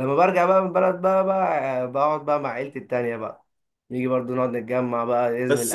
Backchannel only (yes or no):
no